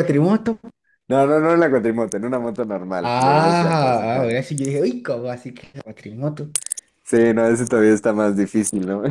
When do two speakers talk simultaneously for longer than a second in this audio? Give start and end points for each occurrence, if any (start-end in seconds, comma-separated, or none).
3.0-4.3